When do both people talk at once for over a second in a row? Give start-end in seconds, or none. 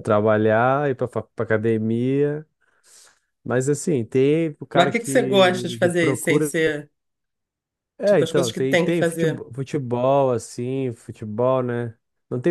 4.7-6.5, 8.1-9.4